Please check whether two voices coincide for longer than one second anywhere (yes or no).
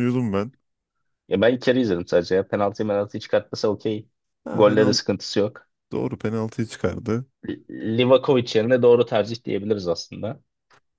no